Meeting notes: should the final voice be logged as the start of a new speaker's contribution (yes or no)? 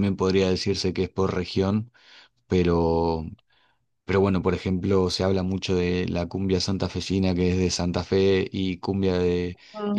no